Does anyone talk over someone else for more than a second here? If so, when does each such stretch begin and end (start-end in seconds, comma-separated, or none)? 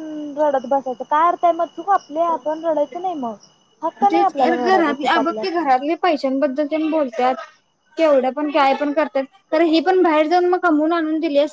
4.1-5.7